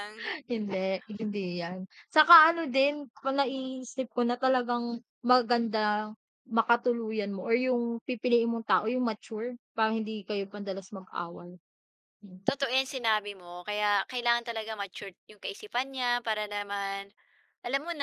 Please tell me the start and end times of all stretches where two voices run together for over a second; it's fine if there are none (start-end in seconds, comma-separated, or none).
none